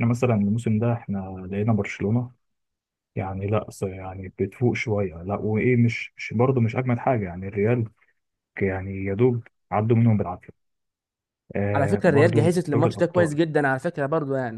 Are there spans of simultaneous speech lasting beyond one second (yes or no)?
yes